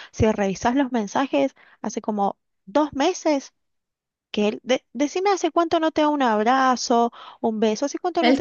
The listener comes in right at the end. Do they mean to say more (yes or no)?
yes